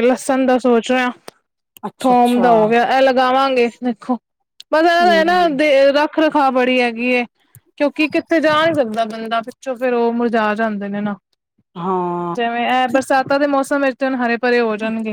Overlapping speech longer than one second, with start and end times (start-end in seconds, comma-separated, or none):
none